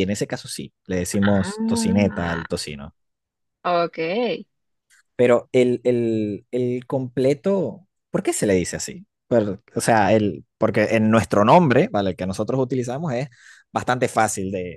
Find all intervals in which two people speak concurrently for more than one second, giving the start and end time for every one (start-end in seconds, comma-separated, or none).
1.1-2.4